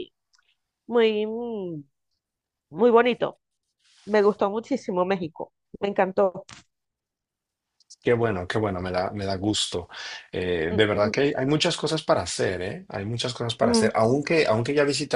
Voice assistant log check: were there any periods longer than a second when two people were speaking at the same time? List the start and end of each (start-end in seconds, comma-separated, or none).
none